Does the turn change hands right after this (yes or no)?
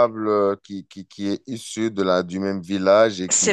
no